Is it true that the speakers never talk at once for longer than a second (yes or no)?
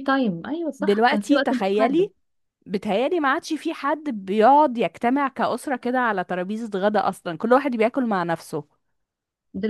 no